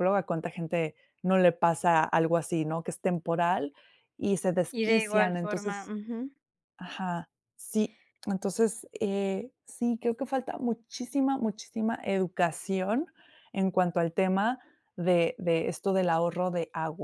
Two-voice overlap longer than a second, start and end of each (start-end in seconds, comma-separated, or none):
4.7-5.9